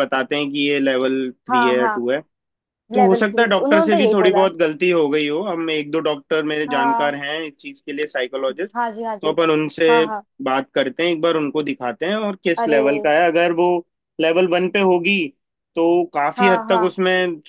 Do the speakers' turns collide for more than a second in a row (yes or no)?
yes